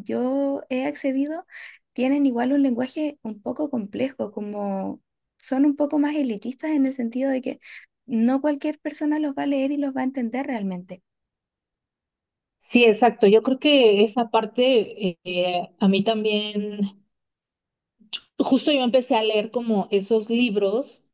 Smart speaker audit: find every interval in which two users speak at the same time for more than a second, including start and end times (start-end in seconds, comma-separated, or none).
none